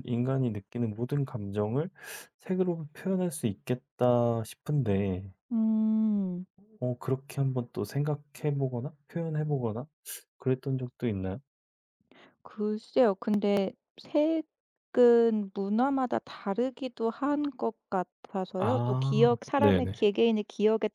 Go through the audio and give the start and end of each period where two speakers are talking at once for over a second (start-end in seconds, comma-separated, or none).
18.6-20.1